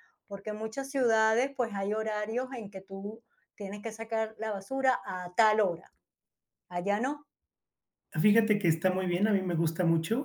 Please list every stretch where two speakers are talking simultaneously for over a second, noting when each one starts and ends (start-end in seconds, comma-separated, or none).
none